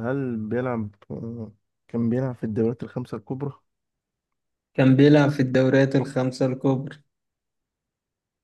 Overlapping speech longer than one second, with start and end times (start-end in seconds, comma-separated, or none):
none